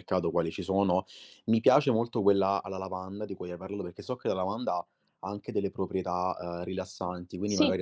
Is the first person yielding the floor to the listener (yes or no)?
no